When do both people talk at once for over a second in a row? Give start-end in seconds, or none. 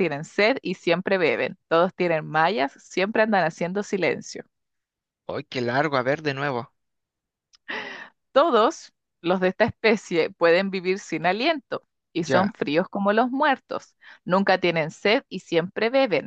none